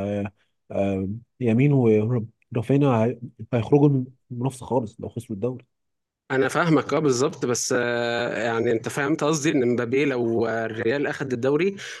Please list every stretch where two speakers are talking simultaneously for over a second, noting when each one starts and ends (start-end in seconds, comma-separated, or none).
none